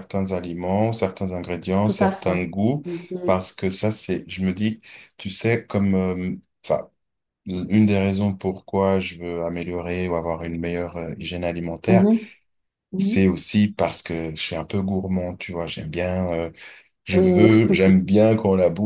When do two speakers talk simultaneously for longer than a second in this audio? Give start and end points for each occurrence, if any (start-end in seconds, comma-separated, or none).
none